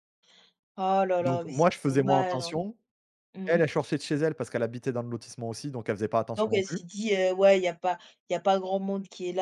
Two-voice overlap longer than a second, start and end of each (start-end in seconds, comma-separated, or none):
1.2-2.5